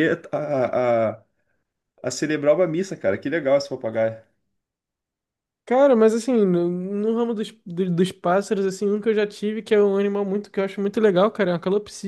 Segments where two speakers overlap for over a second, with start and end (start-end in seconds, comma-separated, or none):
none